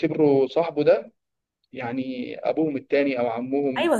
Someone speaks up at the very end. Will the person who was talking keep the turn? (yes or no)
no